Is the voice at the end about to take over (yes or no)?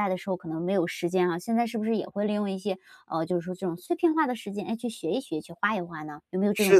yes